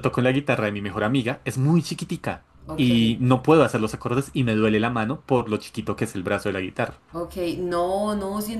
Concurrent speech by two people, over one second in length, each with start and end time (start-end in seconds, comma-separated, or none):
none